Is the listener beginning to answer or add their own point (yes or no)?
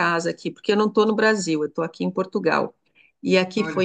no